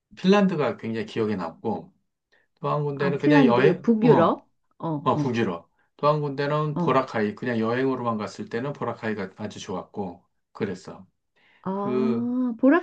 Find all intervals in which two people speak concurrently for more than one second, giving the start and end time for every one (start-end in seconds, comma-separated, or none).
3.0-4.4